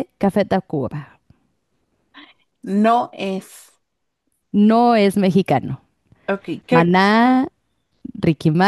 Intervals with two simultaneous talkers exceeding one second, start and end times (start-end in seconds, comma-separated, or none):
none